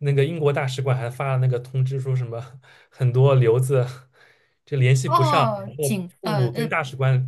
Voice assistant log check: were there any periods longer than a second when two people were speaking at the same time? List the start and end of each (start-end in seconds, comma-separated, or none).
5.0-6.7